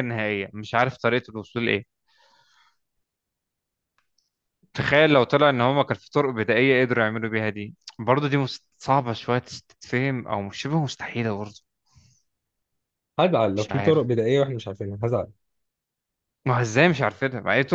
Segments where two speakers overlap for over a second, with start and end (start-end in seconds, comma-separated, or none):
none